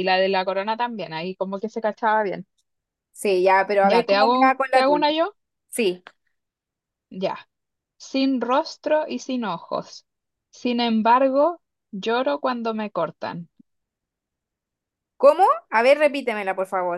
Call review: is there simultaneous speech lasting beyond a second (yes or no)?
yes